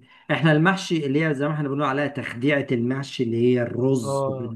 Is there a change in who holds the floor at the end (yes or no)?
no